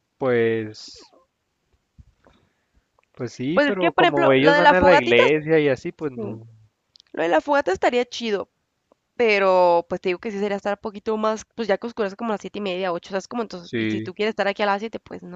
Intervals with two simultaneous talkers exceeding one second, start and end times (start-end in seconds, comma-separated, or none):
3.5-5.2